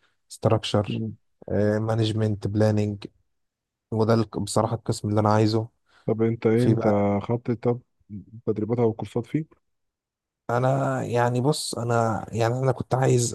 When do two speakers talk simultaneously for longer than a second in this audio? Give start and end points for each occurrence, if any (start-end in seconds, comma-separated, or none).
none